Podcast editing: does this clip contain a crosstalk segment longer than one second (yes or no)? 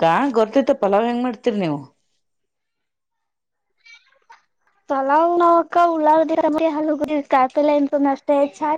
no